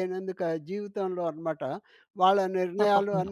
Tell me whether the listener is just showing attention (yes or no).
yes